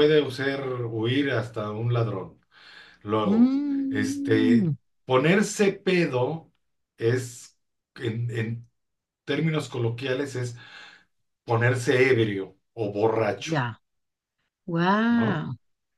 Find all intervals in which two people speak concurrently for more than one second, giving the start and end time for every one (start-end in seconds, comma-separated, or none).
3.3-4.7